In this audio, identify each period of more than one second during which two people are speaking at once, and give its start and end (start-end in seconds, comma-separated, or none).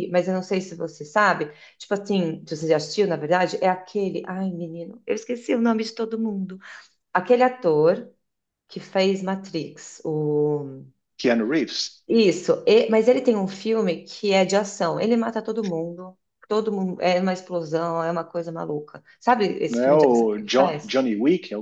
19.7-21.0